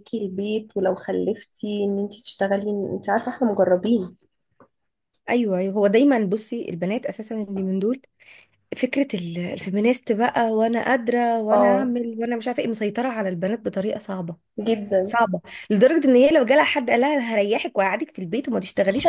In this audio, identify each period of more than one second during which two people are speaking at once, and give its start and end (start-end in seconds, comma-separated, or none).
none